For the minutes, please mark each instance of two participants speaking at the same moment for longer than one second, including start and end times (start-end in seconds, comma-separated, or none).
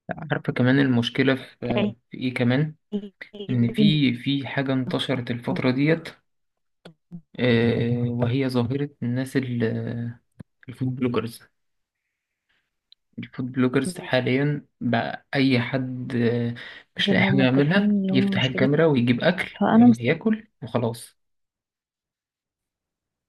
17.1-18.7